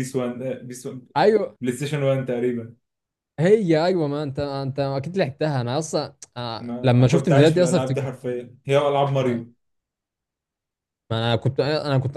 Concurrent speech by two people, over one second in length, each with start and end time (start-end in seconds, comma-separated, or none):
6.6-8.1